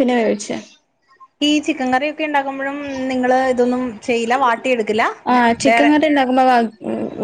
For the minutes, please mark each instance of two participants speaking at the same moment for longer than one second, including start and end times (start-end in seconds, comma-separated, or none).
none